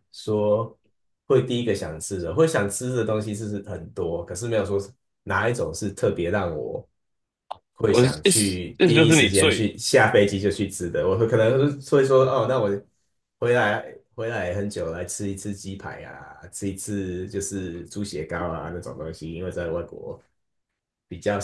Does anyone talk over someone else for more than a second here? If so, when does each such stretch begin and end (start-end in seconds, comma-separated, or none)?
7.9-9.7